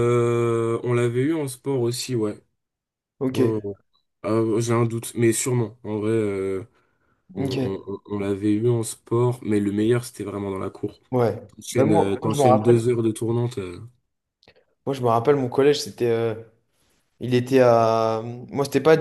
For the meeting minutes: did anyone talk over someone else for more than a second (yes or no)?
yes